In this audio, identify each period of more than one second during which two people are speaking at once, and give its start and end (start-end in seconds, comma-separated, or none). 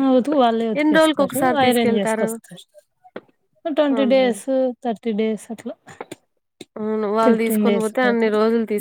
0.8-2.3